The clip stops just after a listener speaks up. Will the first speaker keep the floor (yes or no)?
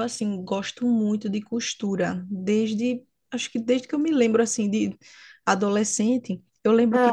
yes